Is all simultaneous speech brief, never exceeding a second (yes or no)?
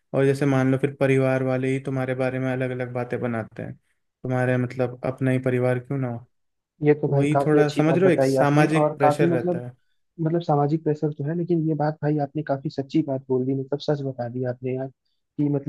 no